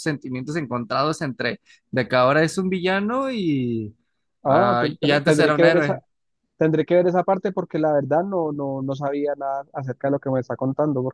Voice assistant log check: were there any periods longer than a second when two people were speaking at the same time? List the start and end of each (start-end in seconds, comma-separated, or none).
4.4-6.0